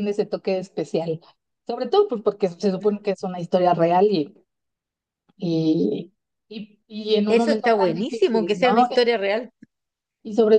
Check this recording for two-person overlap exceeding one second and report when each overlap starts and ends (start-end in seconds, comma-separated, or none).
7.3-8.9